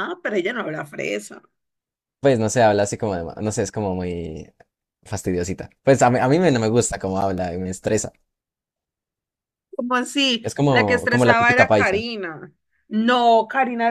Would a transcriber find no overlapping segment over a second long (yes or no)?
no